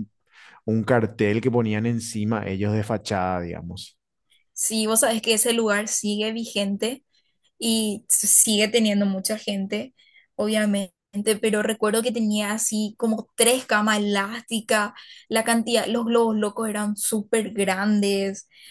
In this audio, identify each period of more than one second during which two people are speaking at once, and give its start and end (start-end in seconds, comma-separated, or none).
none